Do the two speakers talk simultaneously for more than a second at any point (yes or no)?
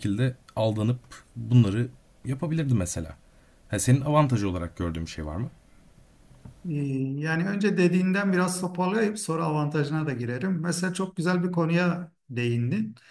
no